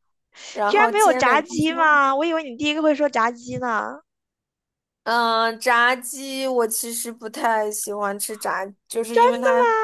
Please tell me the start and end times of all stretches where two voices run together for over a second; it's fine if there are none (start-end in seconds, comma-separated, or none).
0.7-2.0